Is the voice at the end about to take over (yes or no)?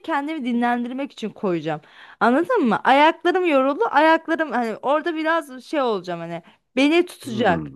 no